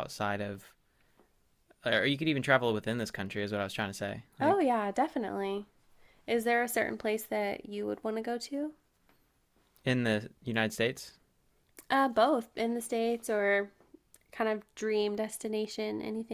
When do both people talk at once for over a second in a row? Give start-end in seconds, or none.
none